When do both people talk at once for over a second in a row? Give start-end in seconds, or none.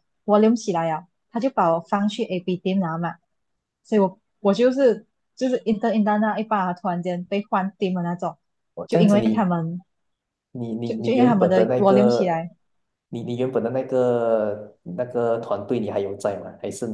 10.8-12.4